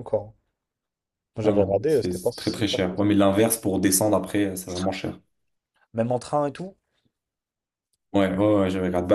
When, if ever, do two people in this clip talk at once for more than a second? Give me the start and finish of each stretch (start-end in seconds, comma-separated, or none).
1.4-3.0